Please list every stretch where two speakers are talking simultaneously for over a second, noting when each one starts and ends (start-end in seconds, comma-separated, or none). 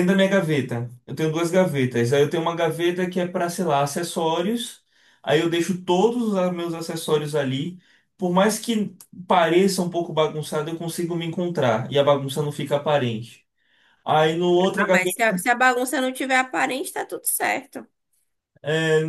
none